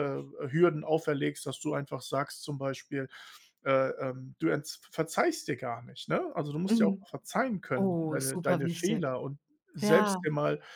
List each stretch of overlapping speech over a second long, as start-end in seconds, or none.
7.8-9.1